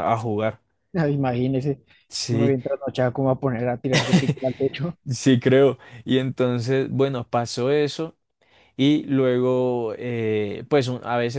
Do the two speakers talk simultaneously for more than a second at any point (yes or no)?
no